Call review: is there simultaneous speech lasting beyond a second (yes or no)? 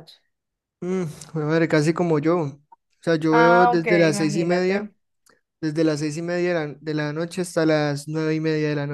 yes